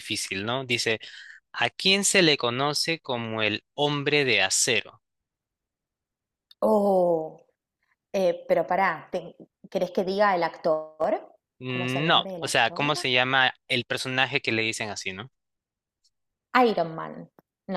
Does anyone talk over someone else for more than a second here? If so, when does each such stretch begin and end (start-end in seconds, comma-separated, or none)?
11.6-12.9